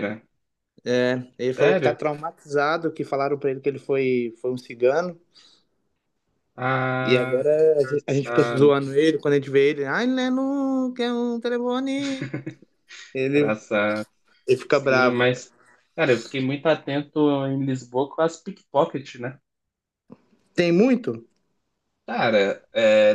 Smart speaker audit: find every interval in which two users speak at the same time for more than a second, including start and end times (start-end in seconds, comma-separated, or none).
7.0-8.7